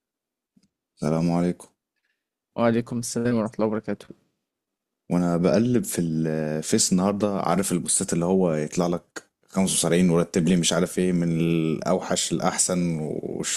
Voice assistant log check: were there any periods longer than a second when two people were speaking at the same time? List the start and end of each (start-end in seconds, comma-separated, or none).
none